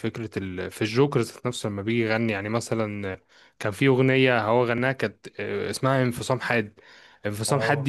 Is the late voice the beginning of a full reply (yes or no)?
no